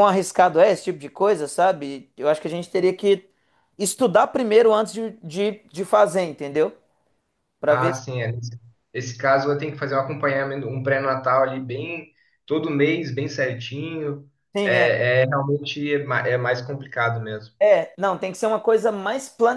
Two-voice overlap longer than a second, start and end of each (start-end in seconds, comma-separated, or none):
none